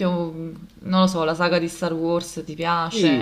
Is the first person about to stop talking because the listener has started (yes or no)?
yes